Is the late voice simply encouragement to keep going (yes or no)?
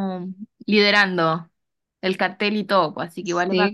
no